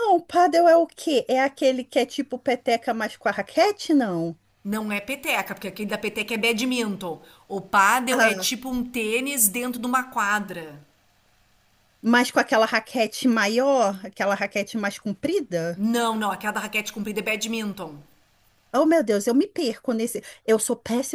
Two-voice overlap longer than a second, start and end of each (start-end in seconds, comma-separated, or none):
none